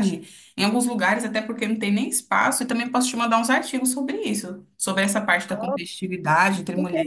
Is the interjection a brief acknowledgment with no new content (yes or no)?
no